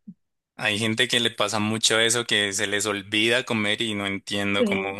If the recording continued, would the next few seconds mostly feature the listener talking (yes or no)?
no